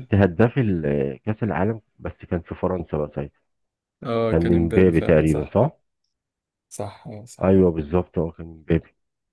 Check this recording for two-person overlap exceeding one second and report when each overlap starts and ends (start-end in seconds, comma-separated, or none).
4.3-5.5